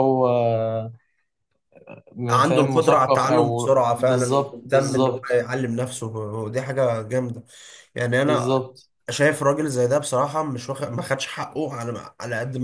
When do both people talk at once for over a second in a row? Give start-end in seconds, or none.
2.3-5.4